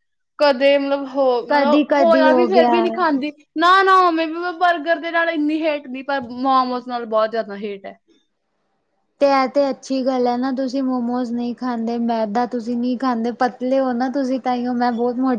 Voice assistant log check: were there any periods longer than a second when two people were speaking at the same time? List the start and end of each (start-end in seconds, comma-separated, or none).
1.5-3.0